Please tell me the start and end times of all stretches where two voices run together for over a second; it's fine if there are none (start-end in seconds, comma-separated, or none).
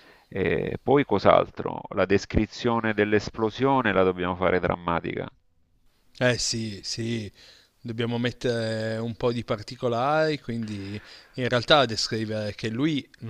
none